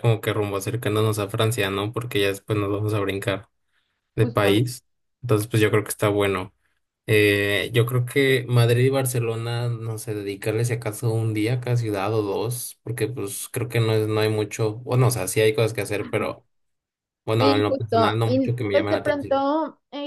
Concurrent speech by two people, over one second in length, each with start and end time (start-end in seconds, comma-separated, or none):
17.4-19.4